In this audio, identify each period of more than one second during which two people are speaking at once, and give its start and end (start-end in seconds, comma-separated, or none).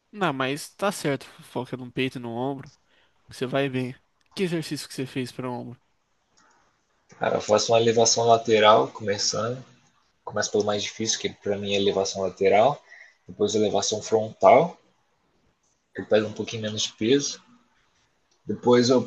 none